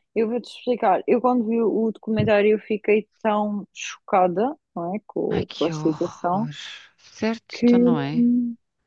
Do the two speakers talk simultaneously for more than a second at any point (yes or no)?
yes